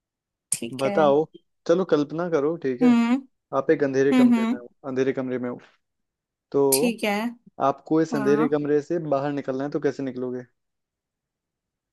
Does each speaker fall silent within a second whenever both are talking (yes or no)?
yes